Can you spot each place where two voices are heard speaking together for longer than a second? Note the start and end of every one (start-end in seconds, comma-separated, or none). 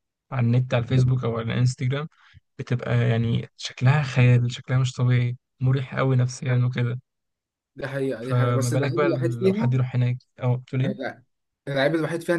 8.2-9.8